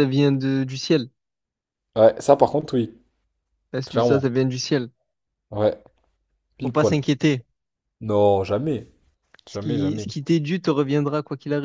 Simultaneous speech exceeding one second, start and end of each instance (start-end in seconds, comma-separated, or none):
none